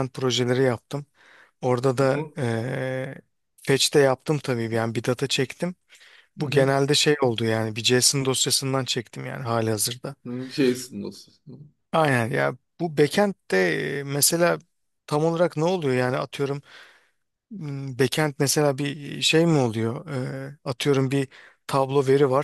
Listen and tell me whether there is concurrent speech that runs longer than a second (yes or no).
no